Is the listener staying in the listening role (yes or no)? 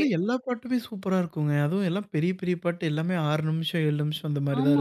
no